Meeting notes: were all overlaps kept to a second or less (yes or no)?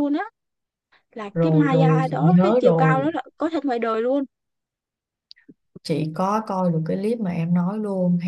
no